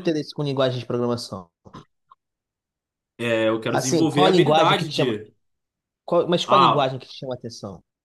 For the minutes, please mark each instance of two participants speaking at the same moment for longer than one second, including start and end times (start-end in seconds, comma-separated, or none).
3.7-5.2